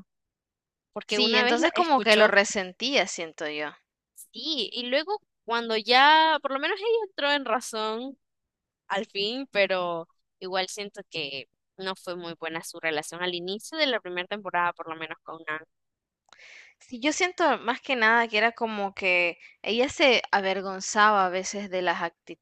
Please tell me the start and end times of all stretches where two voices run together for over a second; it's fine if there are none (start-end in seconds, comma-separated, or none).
1.1-2.3